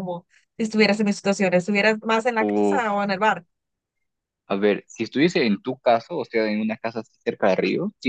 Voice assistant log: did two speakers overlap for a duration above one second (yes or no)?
no